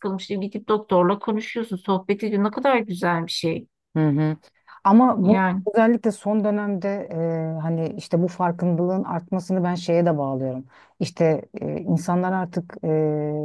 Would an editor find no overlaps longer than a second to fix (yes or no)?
yes